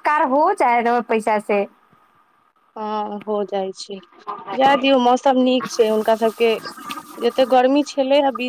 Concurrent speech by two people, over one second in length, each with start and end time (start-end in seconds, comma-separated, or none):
none